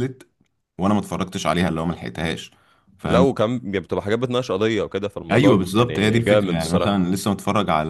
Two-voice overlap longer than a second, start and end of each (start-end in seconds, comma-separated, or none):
5.3-6.9